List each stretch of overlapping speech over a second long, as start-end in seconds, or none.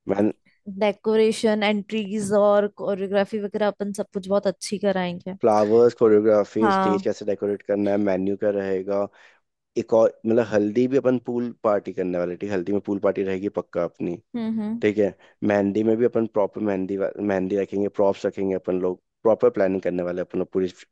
none